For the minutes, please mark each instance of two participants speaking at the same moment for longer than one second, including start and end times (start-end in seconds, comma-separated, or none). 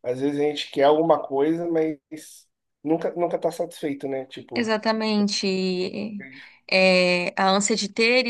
none